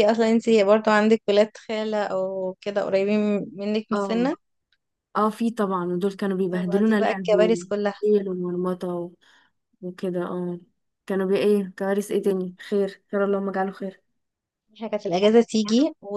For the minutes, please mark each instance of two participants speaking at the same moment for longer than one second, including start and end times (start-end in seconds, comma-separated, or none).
6.5-7.9